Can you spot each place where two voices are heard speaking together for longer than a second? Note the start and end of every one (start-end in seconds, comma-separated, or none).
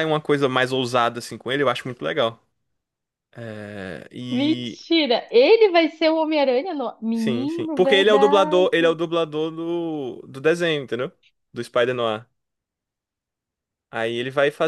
7.1-8.7